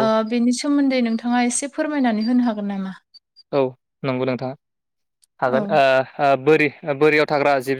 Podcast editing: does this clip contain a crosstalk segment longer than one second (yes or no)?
no